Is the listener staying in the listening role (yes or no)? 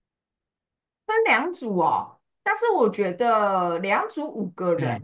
yes